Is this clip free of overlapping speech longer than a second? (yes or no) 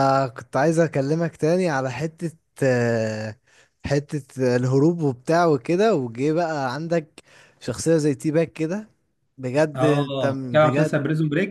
no